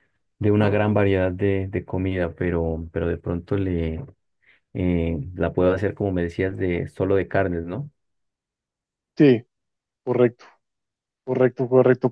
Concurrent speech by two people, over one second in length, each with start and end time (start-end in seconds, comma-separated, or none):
none